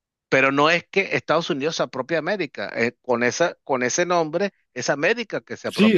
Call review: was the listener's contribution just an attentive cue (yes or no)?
no